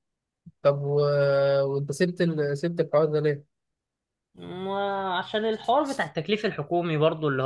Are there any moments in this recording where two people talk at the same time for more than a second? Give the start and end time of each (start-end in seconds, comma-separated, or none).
none